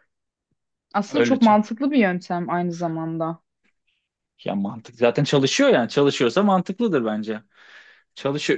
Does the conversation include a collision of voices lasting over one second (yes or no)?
no